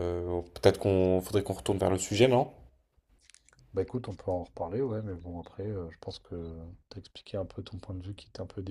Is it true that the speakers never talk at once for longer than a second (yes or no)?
yes